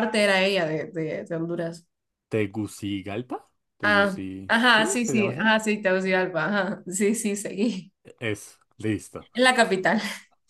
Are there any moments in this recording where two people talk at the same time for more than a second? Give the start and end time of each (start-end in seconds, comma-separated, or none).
3.8-5.4